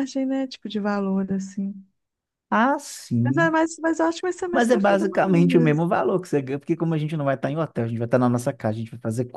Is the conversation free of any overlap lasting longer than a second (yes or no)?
no